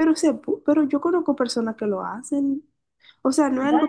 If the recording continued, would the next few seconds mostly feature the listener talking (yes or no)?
no